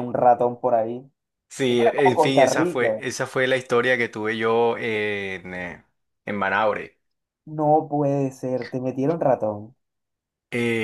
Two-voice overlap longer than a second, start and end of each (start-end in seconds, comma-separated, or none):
1.7-3.0